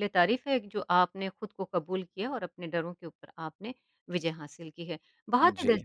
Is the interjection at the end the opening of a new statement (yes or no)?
no